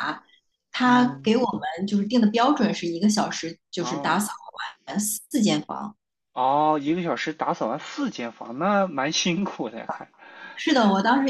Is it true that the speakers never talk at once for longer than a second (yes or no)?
yes